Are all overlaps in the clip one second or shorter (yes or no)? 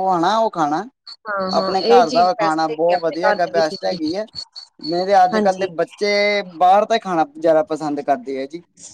no